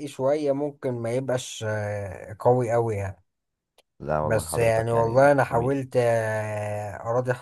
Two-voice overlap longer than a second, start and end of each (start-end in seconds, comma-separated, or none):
4.2-5.8